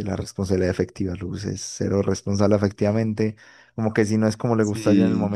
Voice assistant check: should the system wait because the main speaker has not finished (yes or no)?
yes